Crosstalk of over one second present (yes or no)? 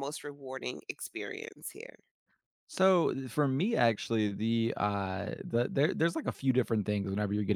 no